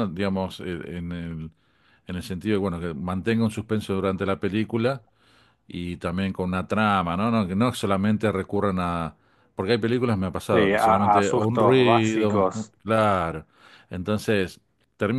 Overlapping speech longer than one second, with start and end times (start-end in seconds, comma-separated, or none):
10.5-12.7